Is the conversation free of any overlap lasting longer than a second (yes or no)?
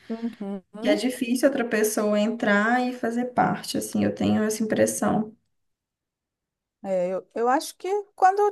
yes